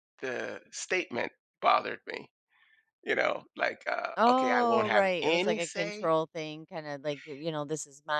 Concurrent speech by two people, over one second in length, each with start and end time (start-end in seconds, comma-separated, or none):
4.2-6.1